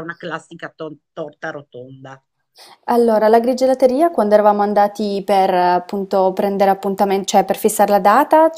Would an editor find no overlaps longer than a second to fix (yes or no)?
yes